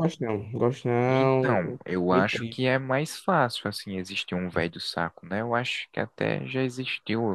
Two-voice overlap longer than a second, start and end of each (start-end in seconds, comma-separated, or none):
1.1-2.6